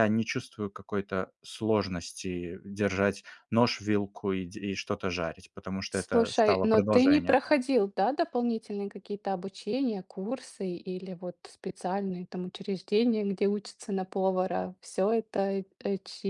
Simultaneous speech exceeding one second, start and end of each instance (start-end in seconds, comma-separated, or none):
5.9-7.4